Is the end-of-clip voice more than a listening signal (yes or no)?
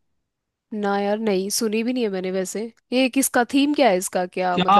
yes